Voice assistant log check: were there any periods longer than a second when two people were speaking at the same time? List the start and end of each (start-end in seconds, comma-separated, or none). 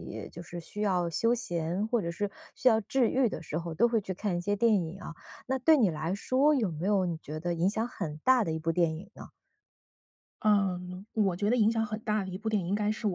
none